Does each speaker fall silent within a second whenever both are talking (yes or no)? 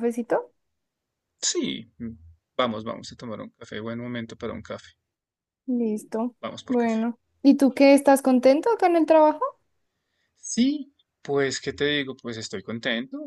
yes